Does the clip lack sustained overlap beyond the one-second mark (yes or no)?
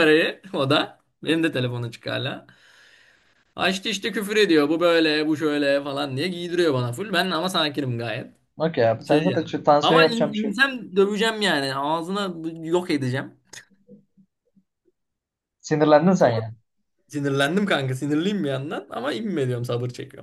no